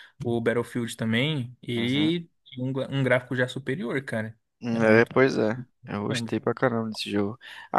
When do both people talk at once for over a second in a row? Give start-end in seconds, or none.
none